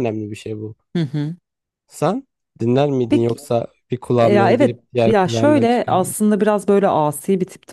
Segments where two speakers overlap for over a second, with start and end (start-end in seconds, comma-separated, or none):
4.2-6.2